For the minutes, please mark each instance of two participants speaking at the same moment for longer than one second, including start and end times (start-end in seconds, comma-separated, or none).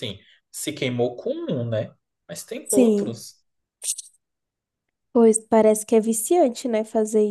none